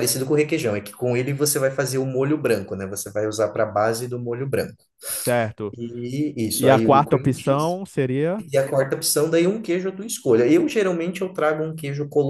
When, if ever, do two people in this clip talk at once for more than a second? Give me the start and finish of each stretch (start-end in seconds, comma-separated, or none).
6.5-7.8